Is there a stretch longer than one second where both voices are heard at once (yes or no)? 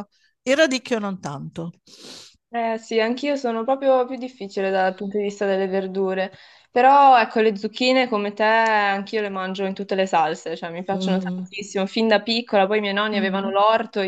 no